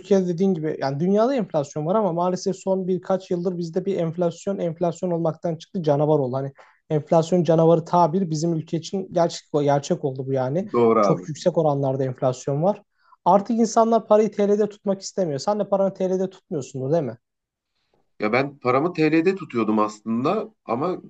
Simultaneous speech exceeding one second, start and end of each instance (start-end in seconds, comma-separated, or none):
none